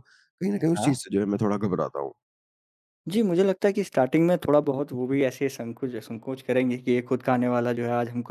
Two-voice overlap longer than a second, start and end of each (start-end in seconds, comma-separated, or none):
none